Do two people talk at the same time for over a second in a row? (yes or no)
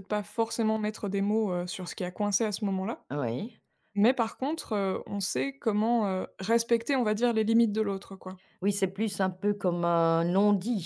no